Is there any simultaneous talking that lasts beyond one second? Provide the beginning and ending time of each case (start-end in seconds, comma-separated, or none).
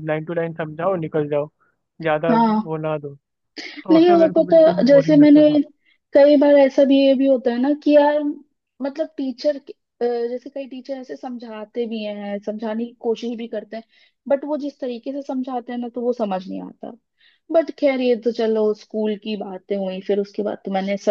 3.9-5.4